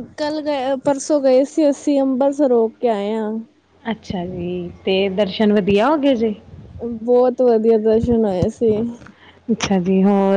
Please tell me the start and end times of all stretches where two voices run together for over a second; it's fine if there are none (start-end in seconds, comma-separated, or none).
none